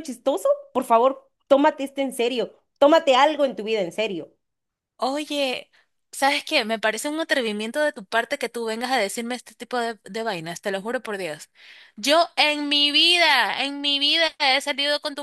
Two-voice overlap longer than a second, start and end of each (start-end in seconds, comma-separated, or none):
none